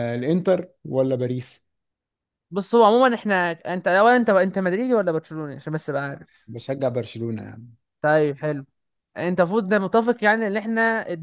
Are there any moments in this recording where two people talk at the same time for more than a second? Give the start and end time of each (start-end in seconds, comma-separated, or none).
none